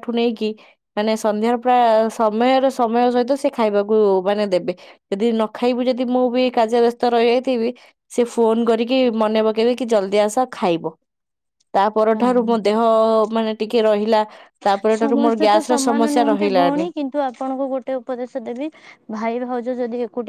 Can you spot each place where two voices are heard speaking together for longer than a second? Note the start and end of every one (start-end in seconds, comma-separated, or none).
15.0-16.8